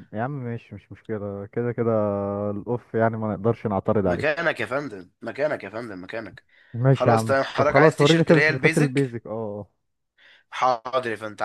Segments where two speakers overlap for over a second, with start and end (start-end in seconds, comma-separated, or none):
6.9-9.2